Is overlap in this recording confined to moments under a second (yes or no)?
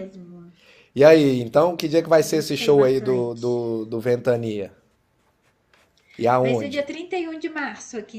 no